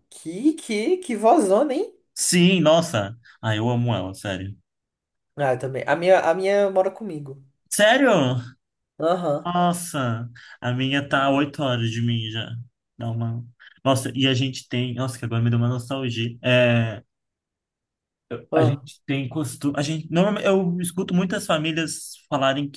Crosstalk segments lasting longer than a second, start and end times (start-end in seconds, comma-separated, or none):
none